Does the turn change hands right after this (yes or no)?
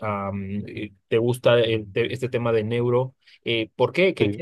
no